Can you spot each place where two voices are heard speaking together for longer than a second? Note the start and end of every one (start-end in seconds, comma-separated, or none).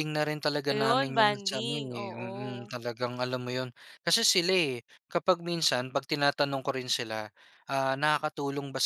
0.7-2.7